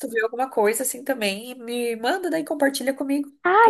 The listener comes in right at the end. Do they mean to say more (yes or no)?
yes